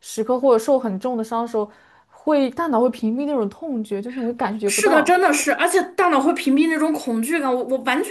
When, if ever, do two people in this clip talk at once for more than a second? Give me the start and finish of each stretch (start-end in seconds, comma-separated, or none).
none